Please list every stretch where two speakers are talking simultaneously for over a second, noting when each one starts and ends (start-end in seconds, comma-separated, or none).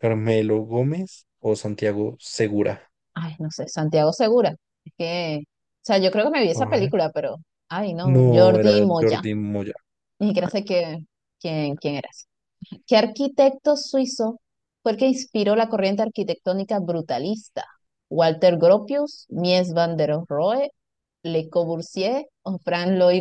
8.0-9.2